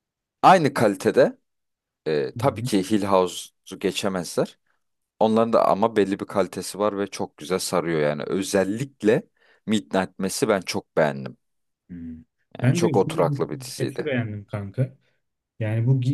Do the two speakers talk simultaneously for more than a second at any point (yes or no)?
yes